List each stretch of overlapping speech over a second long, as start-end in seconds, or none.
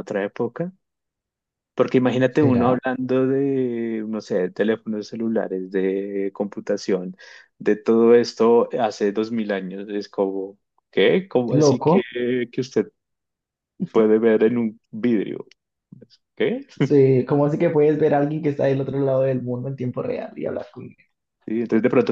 none